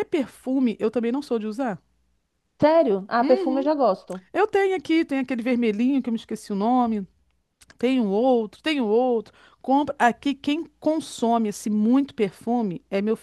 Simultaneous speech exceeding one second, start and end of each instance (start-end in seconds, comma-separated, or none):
none